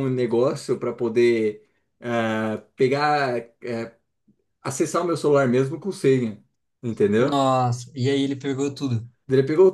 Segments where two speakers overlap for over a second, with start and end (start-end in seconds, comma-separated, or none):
none